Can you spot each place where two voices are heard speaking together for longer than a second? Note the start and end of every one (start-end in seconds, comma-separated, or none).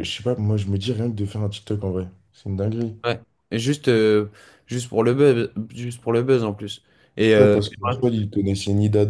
none